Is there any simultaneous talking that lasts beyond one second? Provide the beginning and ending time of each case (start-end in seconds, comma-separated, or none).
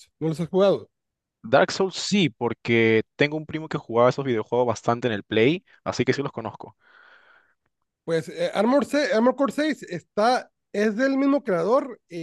none